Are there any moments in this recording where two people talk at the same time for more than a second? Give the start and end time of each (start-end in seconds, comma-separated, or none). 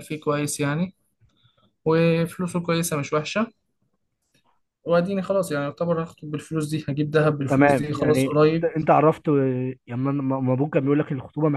7.5-8.7